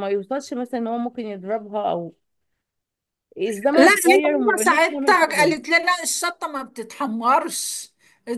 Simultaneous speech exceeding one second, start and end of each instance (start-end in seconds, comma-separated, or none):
3.8-5.5